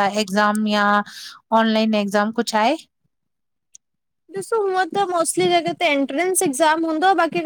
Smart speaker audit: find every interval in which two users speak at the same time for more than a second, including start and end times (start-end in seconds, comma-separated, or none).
none